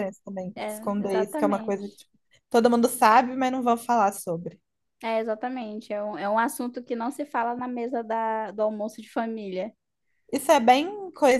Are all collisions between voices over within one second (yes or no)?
no